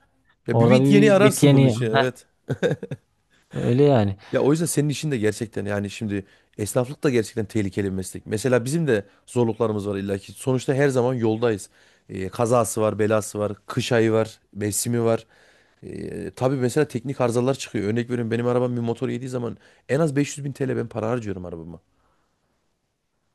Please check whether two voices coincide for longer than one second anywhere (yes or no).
yes